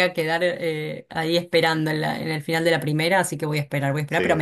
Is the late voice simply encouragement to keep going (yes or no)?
yes